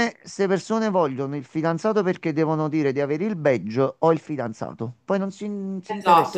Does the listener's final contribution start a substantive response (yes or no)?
yes